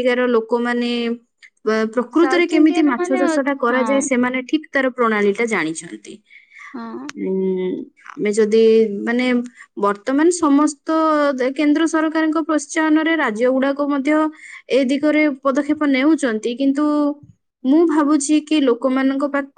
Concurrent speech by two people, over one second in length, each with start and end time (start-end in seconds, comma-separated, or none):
2.2-4.2